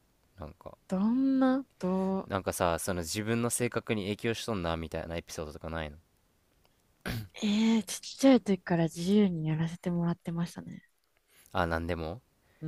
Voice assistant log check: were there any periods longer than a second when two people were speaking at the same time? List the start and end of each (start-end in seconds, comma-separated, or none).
none